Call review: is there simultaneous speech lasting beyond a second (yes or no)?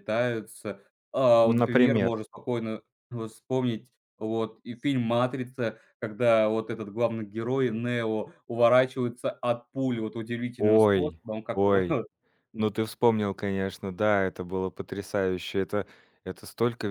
yes